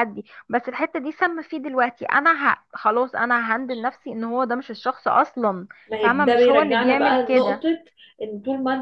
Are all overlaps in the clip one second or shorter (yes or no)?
no